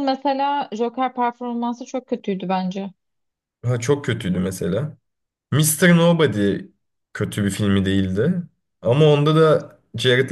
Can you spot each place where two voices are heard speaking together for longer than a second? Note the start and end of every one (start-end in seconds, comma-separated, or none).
none